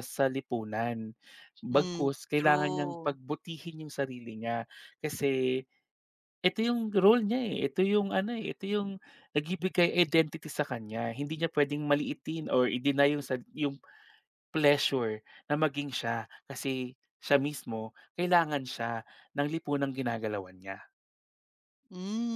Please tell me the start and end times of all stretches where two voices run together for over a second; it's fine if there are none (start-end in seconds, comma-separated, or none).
1.7-3.1